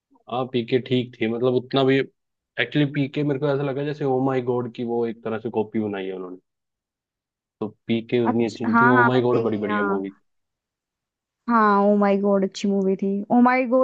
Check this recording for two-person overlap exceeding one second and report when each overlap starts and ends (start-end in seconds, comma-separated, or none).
8.3-10.0